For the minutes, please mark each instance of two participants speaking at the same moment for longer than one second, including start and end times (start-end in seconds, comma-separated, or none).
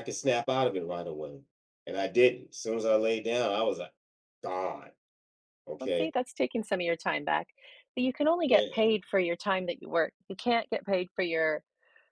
none